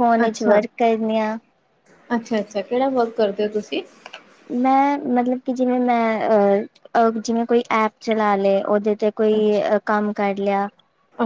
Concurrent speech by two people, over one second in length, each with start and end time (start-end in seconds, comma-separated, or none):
none